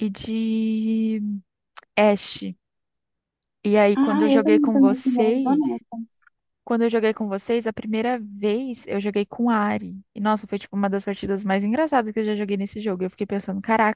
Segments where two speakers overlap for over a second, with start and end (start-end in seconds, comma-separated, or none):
4.0-5.8